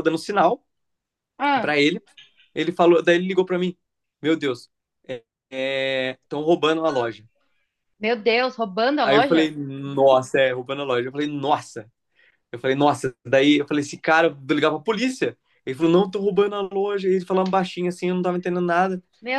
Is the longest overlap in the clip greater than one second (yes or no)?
no